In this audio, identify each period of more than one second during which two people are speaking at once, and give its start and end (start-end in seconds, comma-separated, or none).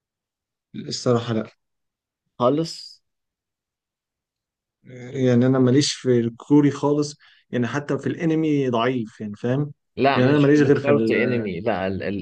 10.1-11.5